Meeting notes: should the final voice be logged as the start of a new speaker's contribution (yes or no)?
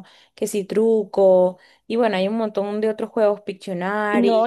yes